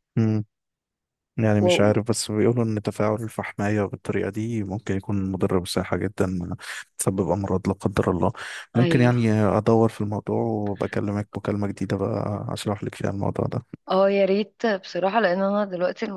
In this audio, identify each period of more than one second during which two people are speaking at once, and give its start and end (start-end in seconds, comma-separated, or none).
none